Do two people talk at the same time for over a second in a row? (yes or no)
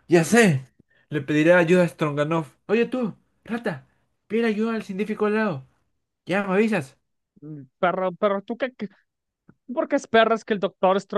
no